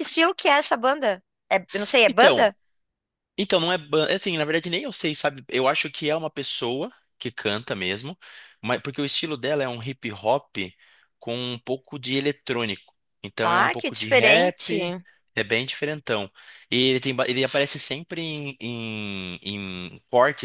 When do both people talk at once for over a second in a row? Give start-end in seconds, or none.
13.4-14.8